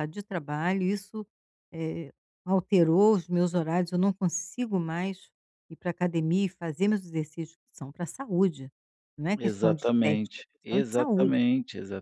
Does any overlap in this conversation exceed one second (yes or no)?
yes